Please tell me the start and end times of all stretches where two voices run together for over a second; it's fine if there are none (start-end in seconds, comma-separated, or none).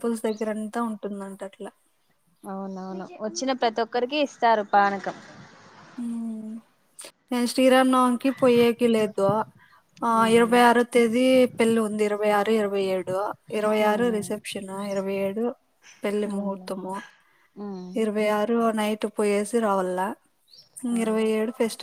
none